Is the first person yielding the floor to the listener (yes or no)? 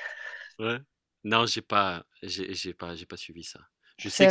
no